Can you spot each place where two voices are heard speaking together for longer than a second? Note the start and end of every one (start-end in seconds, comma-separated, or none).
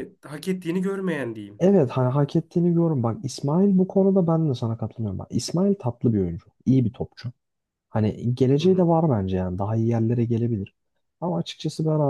none